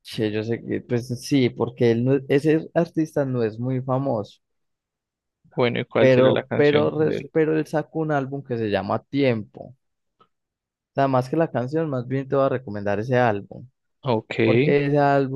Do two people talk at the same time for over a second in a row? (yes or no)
yes